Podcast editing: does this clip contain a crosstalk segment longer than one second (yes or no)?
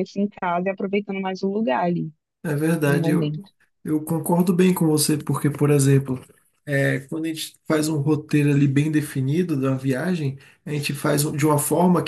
no